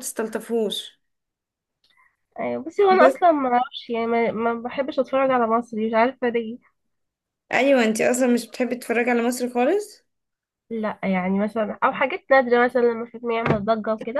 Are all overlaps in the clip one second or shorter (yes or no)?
yes